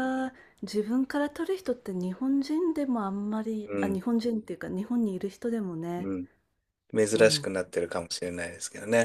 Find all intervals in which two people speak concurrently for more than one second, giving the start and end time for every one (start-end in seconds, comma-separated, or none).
none